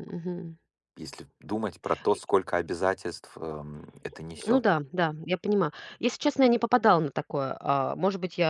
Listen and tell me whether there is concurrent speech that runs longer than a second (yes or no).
no